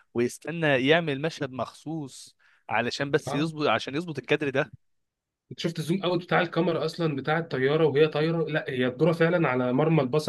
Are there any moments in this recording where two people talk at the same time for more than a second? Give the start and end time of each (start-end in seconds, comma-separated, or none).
none